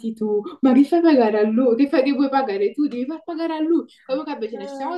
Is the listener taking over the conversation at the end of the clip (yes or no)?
no